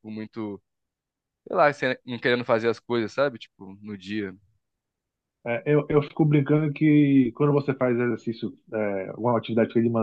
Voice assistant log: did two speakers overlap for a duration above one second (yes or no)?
no